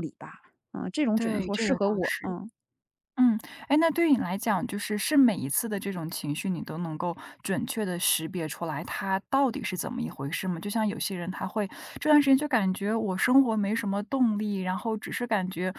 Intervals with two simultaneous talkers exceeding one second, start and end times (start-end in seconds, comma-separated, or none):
1.1-2.3